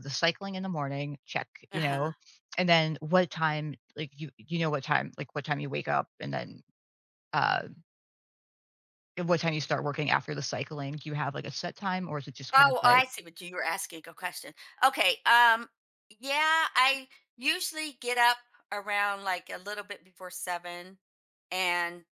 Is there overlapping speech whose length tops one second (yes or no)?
no